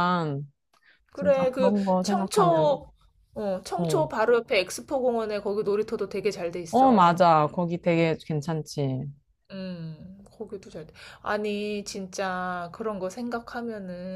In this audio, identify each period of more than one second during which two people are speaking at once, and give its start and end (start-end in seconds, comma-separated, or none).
1.1-2.8